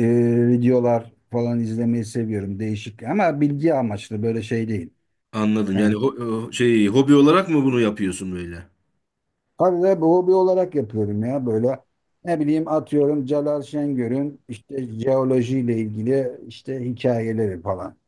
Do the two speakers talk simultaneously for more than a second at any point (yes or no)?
no